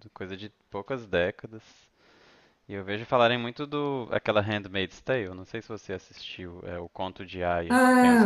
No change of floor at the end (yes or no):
no